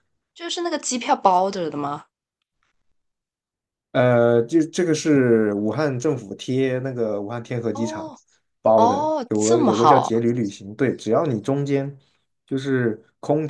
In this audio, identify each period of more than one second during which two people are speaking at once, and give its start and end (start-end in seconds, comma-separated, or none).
8.7-10.1